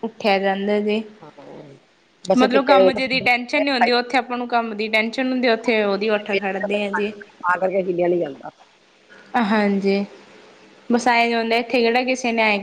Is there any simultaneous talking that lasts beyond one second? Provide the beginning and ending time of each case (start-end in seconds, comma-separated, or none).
none